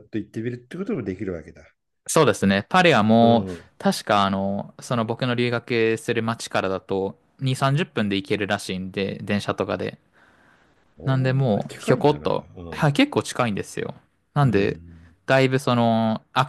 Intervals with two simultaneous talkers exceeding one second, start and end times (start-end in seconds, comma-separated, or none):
11.0-13.0